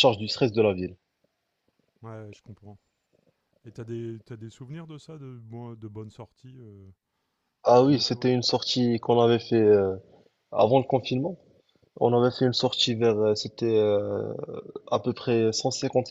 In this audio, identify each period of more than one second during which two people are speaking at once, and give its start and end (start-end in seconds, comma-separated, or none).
none